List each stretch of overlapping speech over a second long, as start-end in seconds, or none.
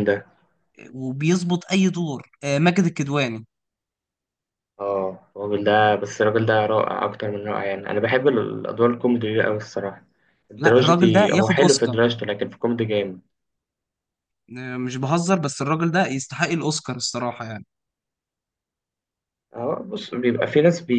10.6-11.9